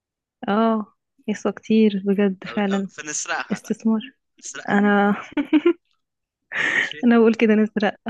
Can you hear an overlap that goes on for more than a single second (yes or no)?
no